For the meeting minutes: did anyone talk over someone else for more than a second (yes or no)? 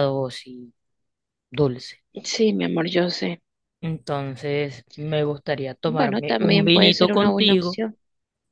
yes